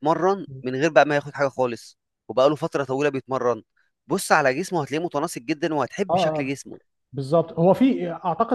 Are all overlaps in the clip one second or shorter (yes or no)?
yes